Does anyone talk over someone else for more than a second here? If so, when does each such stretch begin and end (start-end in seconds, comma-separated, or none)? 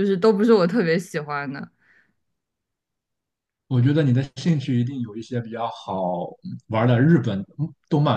none